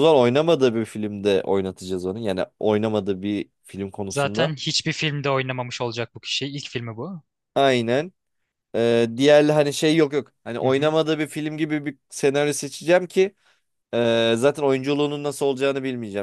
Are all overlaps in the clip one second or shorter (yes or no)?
yes